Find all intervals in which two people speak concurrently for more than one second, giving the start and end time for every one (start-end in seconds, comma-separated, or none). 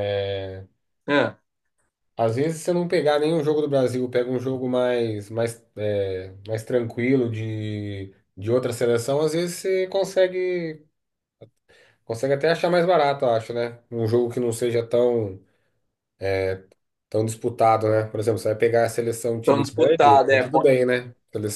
19.4-20.7